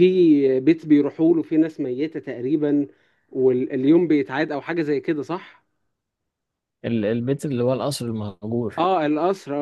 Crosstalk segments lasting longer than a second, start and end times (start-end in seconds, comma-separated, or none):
none